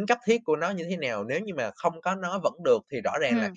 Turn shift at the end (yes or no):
no